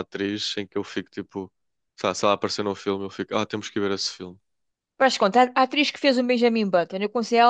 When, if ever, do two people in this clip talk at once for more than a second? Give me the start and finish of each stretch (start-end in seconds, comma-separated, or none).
none